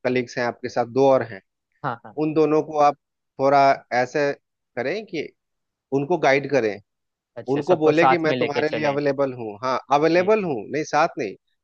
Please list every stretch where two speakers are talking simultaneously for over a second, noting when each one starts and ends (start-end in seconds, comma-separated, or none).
7.5-9.0